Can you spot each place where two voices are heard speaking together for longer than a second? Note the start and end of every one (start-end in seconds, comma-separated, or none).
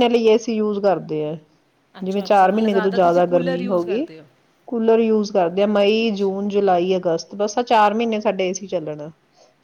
2.0-4.0